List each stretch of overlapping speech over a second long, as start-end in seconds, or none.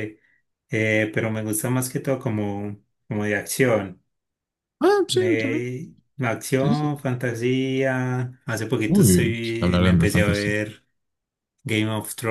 8.9-10.5